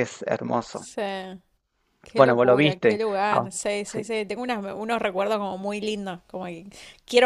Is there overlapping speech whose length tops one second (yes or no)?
yes